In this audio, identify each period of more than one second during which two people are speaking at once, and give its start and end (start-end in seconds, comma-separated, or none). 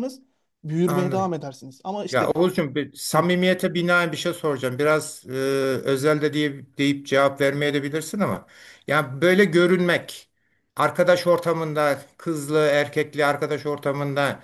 none